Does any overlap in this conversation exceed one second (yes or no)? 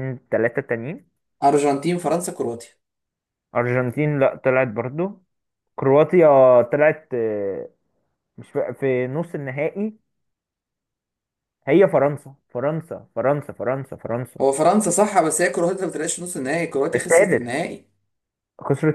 no